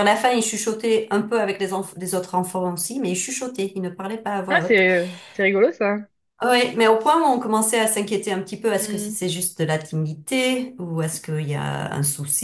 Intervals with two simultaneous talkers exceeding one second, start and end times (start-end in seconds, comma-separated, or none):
none